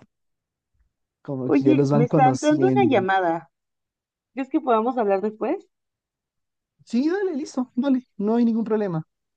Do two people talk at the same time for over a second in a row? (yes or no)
yes